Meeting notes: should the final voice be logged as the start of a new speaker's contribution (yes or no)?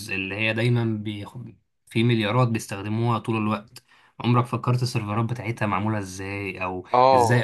no